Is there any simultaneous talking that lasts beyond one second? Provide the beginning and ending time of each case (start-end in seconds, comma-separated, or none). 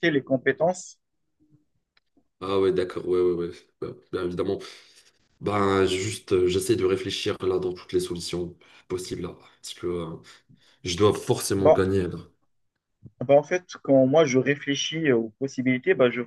none